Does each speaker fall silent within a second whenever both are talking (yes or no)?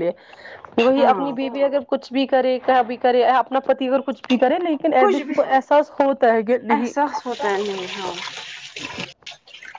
yes